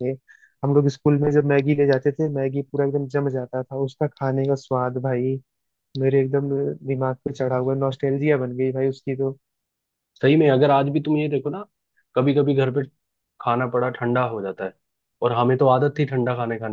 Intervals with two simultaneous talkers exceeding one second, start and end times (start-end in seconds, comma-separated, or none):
none